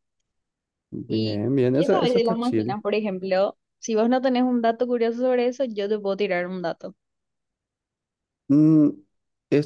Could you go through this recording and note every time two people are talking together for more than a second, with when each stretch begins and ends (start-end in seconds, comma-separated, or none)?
1.1-2.8